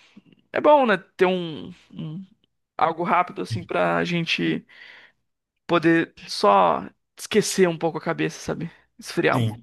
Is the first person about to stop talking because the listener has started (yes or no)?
yes